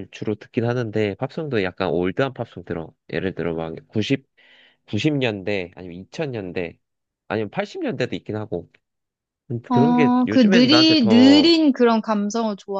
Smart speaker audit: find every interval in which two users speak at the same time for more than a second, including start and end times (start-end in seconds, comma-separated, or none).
9.7-11.5